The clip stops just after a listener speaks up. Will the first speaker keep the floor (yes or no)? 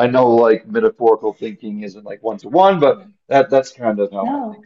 no